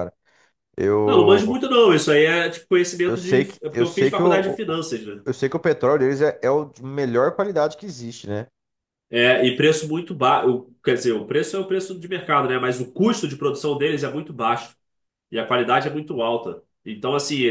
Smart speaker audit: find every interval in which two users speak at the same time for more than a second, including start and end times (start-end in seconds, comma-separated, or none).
3.1-4.6